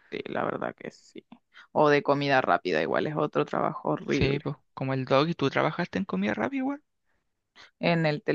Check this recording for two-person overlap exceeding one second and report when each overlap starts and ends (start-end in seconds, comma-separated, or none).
none